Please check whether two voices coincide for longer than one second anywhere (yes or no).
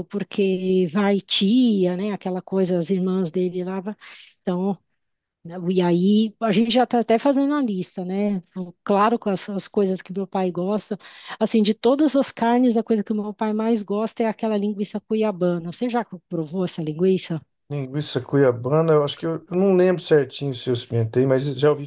no